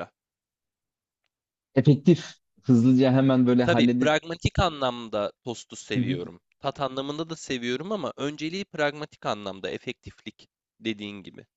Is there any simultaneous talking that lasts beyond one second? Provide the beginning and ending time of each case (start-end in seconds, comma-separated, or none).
none